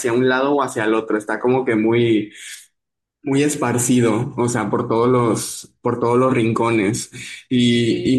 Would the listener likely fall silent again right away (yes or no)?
yes